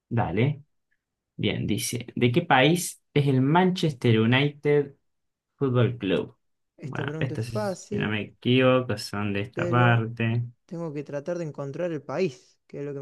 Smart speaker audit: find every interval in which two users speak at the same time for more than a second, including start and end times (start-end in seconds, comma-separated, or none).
6.8-8.2